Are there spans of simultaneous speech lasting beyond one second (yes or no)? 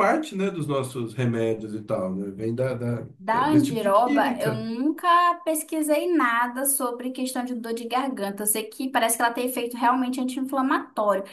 yes